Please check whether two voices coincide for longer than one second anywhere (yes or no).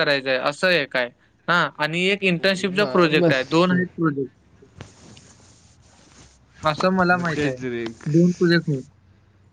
yes